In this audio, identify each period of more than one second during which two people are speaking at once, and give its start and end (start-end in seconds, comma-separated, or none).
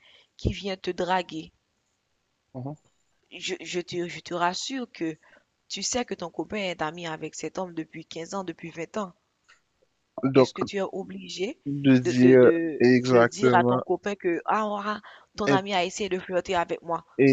12.0-13.8